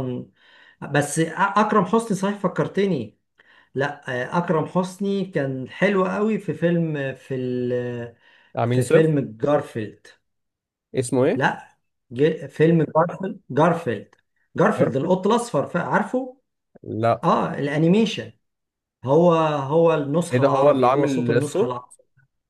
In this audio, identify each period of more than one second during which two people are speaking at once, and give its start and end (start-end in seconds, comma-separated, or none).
20.3-21.8